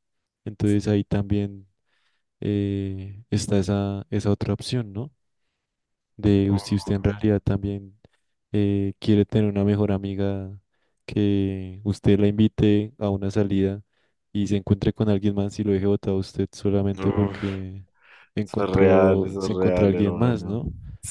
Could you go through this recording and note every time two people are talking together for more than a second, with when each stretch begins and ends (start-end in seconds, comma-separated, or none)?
18.5-20.6